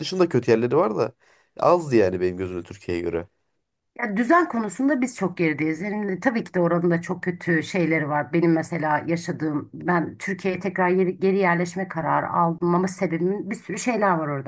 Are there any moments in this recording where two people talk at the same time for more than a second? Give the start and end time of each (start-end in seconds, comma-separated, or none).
none